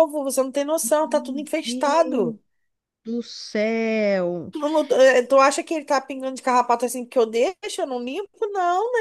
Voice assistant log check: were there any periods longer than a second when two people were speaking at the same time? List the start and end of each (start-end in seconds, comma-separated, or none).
0.8-2.4